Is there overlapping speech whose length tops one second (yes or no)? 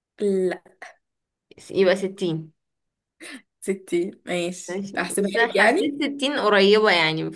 yes